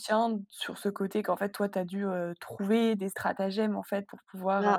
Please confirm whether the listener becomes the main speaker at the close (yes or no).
yes